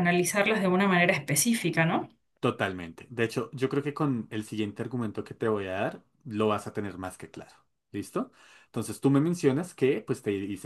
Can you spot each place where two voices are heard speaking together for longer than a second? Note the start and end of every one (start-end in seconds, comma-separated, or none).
none